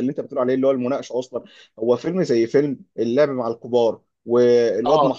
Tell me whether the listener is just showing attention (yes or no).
yes